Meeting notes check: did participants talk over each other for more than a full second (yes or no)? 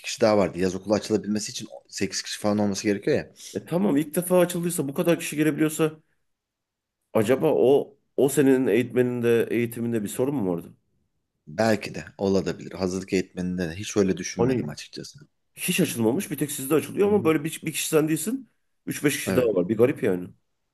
no